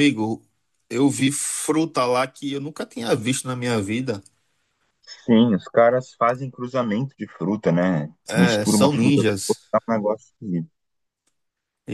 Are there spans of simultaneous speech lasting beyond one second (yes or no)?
yes